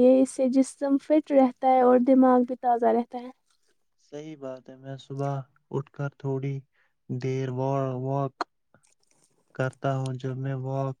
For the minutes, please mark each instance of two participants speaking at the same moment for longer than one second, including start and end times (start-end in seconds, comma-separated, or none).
none